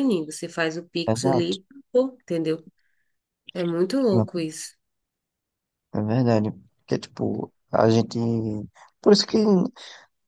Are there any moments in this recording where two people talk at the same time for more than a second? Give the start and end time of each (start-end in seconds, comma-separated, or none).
none